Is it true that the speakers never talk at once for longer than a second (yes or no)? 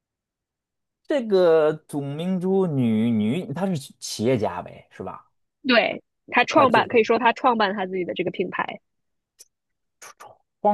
yes